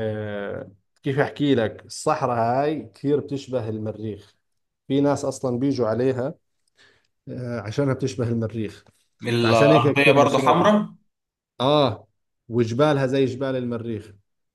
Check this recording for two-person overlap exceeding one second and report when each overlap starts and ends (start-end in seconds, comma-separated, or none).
9.4-10.7